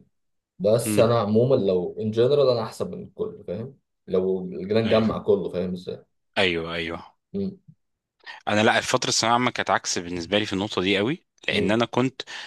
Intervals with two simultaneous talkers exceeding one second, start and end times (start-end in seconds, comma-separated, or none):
none